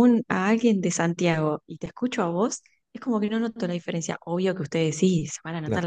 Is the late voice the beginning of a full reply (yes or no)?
no